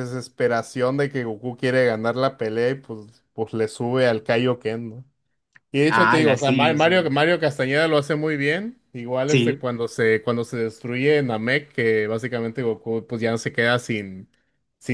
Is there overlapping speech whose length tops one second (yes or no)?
yes